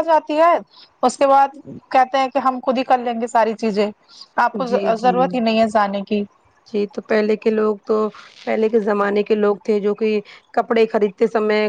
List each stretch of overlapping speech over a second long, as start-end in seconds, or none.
none